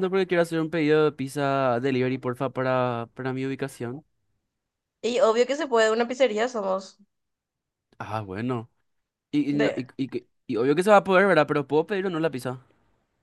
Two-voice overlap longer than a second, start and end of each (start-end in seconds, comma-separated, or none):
none